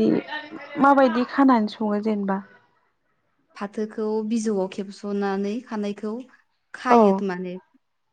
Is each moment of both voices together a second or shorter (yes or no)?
yes